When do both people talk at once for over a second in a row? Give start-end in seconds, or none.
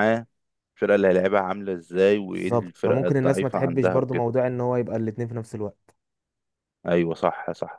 2.3-4.3